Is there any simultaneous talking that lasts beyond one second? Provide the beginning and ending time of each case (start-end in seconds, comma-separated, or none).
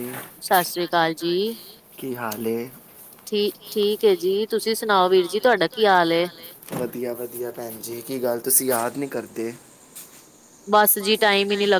none